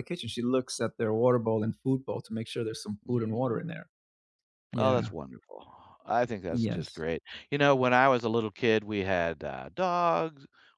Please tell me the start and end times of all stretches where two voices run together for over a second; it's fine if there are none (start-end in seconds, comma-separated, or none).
none